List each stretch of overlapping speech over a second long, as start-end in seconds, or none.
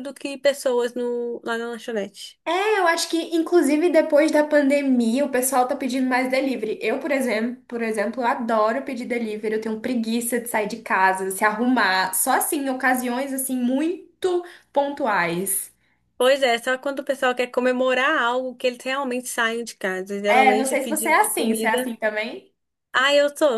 20.3-21.8